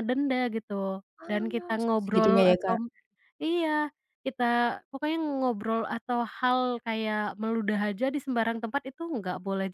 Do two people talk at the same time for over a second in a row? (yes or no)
yes